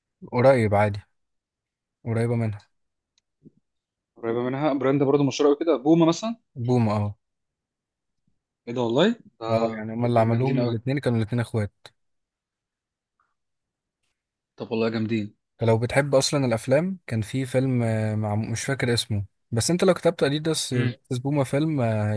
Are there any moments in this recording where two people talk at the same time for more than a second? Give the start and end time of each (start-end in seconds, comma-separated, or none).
9.5-10.8